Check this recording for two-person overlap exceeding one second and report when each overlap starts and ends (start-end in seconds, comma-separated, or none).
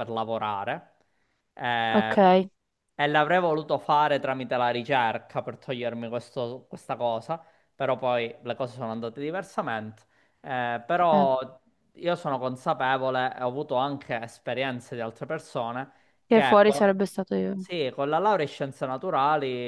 none